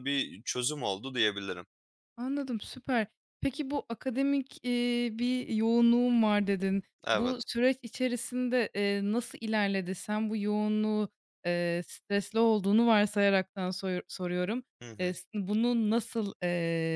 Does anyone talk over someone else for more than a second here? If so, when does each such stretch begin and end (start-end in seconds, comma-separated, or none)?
none